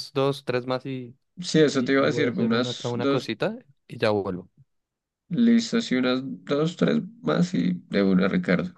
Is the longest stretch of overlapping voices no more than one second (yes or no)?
no